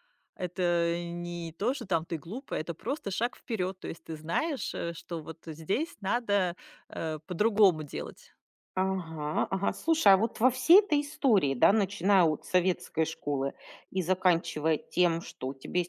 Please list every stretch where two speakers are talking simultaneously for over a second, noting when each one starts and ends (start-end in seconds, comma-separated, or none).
none